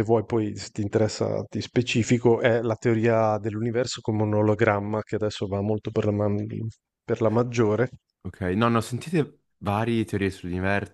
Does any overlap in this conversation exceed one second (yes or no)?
no